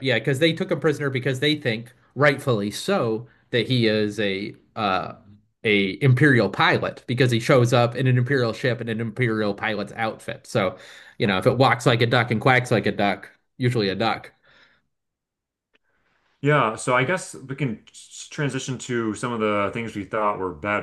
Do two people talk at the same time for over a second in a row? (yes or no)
no